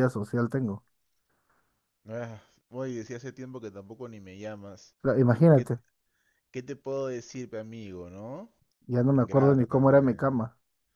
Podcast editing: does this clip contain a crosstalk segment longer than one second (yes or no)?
yes